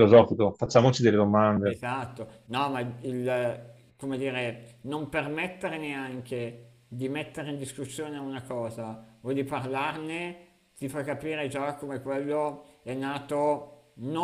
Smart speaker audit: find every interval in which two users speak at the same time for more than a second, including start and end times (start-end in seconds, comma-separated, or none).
none